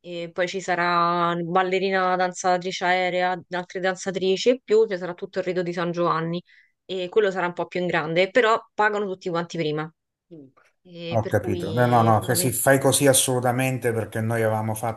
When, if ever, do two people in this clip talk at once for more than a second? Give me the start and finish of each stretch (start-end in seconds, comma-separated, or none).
11.1-12.6